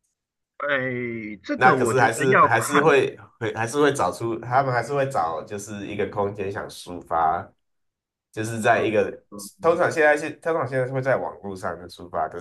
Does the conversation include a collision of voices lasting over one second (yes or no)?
yes